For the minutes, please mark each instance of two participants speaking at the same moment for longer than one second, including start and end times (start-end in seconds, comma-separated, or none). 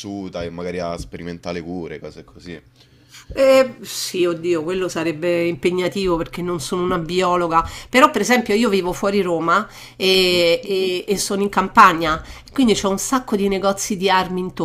none